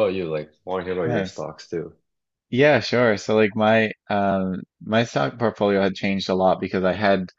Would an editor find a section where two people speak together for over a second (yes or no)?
no